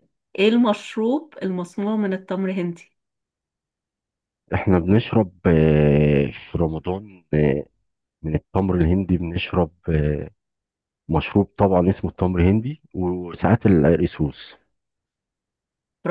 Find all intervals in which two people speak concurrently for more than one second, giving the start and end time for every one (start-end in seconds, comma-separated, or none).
none